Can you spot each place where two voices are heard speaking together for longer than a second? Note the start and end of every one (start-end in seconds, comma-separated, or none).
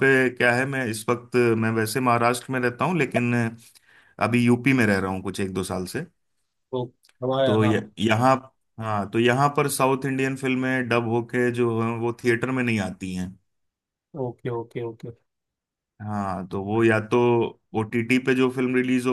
none